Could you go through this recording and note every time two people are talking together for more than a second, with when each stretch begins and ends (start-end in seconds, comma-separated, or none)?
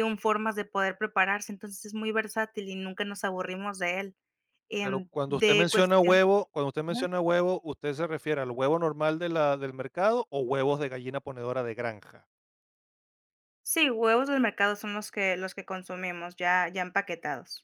4.8-6.2